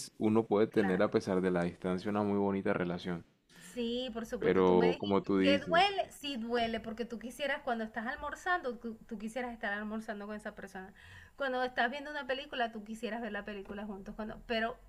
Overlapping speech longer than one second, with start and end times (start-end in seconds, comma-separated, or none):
4.4-5.9